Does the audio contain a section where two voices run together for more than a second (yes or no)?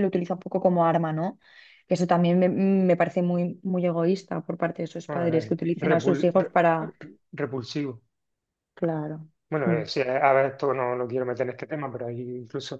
yes